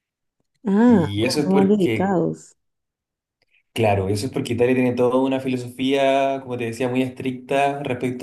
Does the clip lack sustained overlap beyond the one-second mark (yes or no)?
no